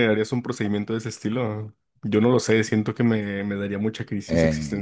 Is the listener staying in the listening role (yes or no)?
no